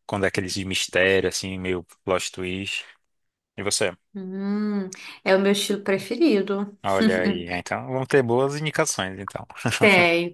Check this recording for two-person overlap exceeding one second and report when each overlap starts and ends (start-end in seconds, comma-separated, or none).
none